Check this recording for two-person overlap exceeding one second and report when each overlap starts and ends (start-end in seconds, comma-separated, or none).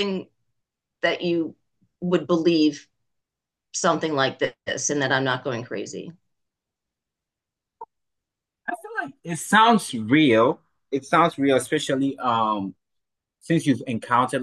none